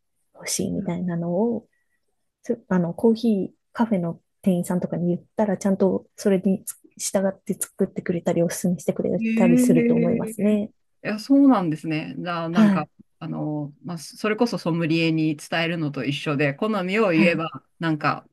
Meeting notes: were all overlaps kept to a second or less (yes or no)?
no